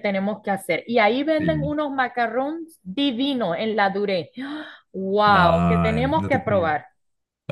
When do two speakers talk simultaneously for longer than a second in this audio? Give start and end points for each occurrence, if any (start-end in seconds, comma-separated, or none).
5.2-6.7